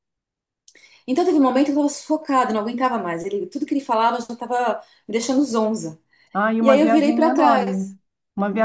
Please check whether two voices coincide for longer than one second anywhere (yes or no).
yes